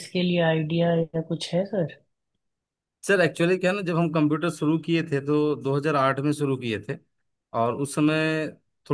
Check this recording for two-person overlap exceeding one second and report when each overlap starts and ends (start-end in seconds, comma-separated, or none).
none